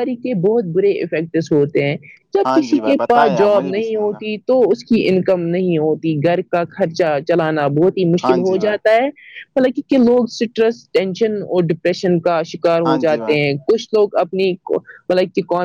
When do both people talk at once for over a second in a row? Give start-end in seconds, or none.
2.4-4.2